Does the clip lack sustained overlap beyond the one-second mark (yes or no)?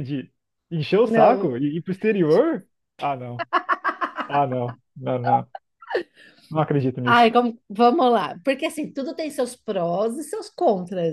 yes